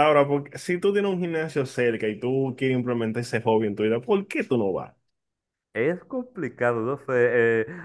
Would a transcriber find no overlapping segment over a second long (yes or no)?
yes